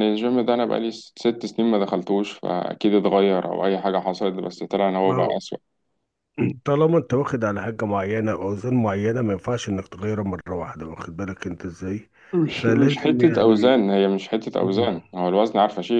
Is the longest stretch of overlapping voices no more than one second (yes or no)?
no